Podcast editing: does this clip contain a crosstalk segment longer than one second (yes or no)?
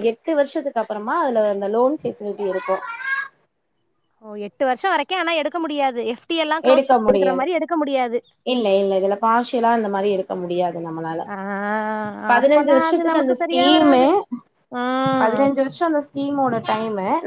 yes